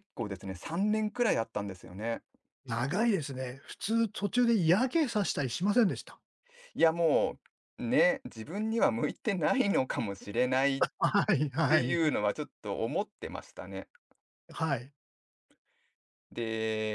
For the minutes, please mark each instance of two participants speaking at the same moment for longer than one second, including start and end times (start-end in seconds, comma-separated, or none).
none